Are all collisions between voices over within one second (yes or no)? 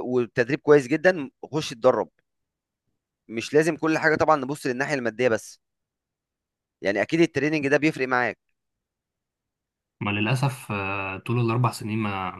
yes